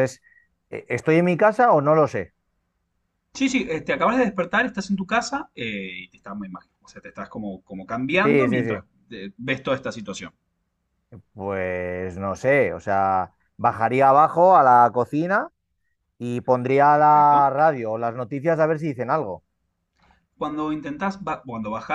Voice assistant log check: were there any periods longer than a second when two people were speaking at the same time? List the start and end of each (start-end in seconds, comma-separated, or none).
none